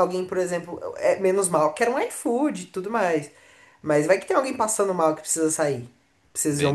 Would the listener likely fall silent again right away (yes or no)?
no